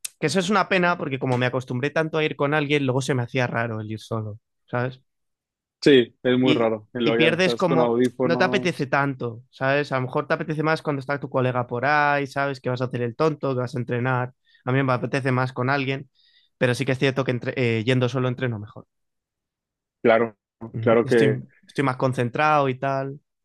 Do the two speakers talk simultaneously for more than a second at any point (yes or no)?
yes